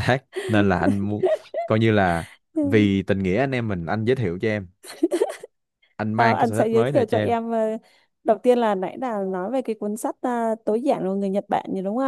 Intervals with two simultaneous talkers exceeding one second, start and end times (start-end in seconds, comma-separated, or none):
6.2-7.3